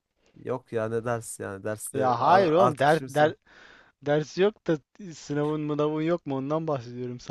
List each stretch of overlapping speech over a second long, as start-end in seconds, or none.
1.9-3.1